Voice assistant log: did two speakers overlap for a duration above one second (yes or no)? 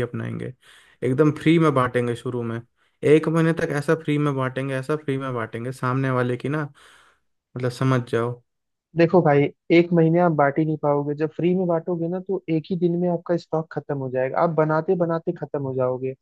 no